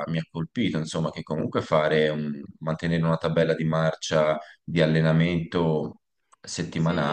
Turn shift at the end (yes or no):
yes